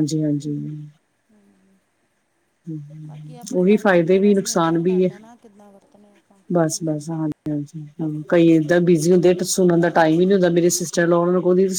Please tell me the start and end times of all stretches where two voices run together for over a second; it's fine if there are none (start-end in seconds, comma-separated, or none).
3.5-5.1